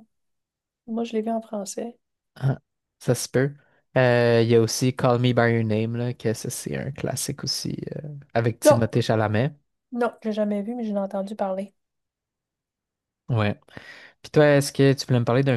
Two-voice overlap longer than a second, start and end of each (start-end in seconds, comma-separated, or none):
none